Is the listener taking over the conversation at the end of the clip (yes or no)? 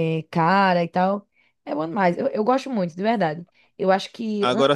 no